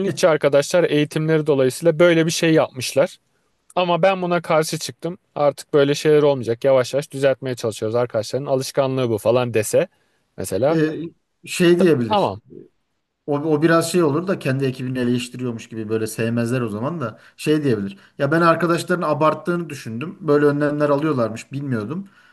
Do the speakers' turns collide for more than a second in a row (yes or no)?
no